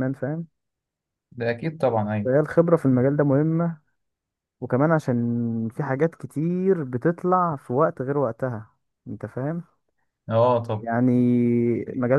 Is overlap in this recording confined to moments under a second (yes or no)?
yes